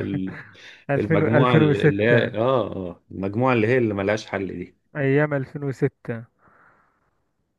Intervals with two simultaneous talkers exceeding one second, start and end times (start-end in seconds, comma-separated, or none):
1.0-2.3